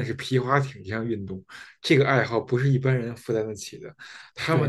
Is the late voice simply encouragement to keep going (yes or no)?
no